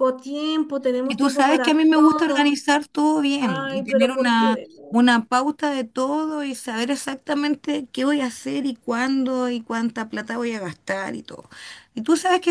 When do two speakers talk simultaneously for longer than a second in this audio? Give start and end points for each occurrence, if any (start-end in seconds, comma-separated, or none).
1.1-2.6, 3.4-5.0